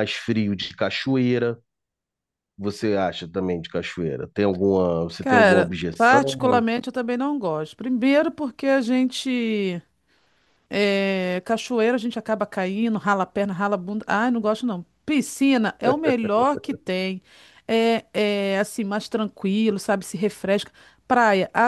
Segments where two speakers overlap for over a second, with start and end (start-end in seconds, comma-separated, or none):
5.2-6.6